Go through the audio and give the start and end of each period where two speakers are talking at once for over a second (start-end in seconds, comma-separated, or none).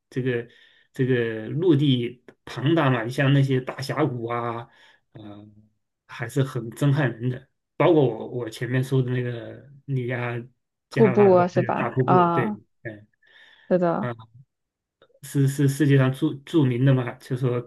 10.9-12.6